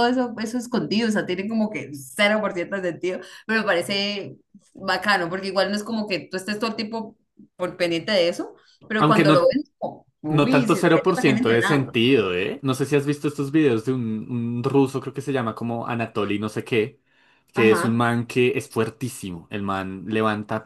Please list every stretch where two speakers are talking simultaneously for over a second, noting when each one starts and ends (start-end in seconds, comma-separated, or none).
10.3-12.0